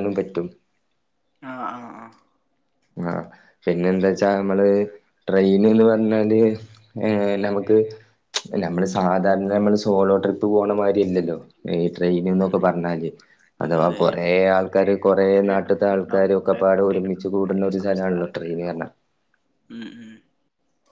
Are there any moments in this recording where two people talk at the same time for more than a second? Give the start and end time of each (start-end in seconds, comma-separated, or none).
15.6-18.9